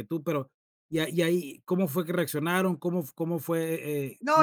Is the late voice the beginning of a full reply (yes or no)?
yes